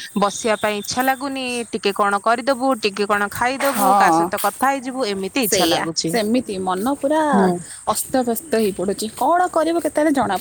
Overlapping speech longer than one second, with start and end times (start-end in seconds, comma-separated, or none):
none